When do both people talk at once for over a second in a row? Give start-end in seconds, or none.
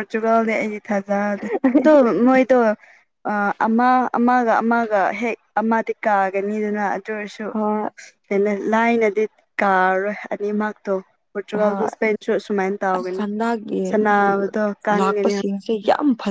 none